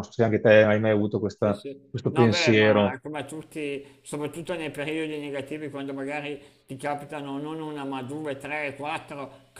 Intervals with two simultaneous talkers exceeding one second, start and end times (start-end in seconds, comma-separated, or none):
1.4-3.0